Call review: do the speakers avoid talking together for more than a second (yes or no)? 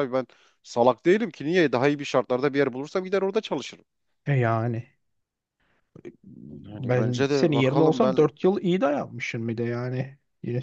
no